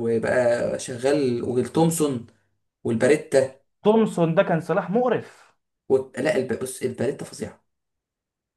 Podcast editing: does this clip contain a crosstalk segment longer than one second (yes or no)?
no